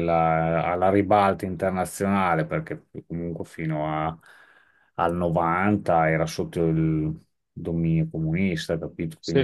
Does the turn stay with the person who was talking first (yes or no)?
no